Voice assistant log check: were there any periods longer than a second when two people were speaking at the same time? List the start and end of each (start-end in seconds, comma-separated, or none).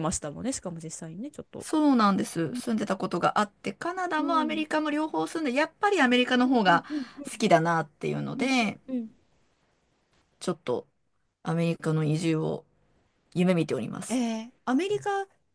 none